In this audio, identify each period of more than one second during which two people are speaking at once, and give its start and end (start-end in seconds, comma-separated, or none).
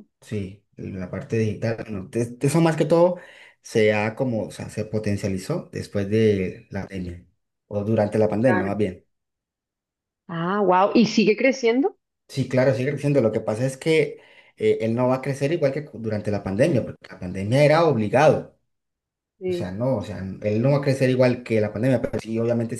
none